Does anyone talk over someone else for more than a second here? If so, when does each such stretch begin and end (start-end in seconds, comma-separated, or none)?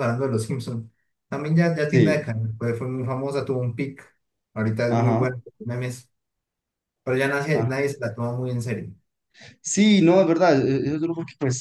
none